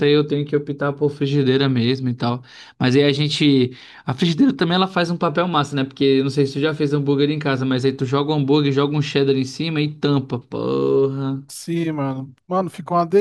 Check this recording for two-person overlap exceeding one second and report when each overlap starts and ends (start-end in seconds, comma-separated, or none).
none